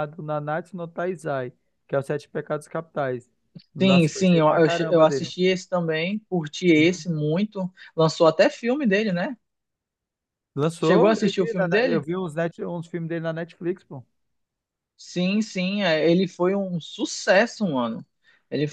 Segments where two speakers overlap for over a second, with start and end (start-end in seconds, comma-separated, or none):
3.8-5.3, 10.8-12.0